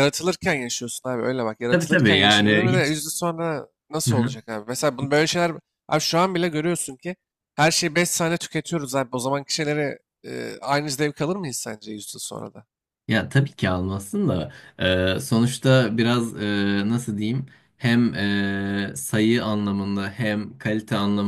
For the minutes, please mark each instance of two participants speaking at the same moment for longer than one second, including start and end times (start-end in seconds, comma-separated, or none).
1.7-3.0